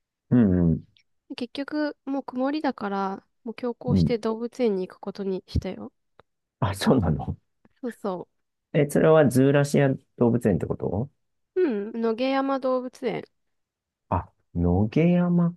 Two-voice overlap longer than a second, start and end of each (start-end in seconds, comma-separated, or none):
none